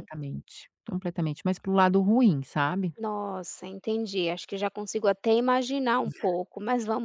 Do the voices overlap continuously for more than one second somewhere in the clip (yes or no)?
no